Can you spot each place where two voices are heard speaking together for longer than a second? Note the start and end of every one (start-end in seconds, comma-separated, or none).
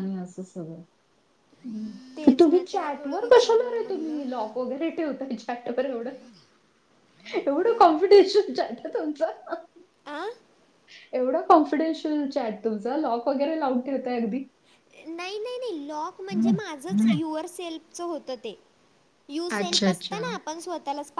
2.3-4.2